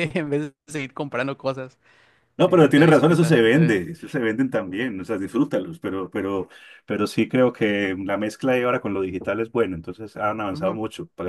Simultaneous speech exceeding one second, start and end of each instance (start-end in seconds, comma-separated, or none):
2.4-3.8